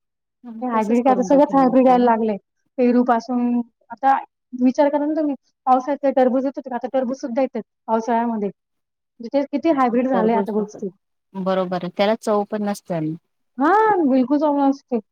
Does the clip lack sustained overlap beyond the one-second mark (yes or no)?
no